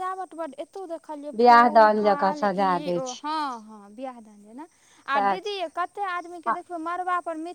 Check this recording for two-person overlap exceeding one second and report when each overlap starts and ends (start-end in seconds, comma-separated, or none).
1.4-3.2